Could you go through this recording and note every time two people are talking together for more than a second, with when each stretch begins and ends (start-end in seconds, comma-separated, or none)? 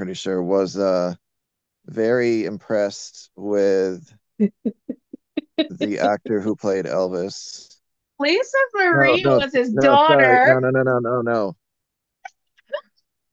8.9-10.6